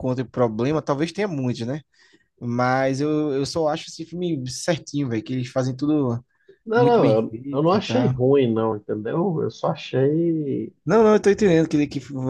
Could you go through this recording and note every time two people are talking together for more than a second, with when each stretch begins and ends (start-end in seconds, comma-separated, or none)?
6.7-8.2